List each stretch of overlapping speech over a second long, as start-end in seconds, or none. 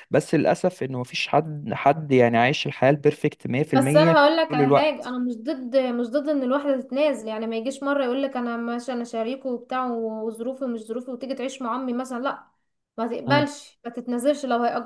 3.8-5.1